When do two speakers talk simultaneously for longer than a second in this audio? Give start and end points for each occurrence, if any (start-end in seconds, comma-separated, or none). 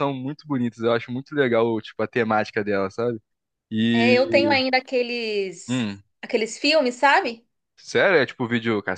none